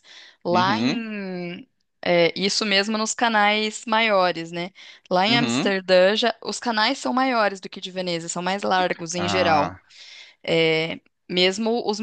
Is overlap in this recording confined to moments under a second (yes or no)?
yes